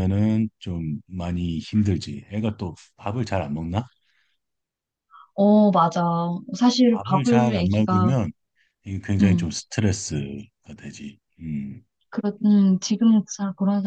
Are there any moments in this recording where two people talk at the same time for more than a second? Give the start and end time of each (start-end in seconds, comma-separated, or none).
6.9-8.1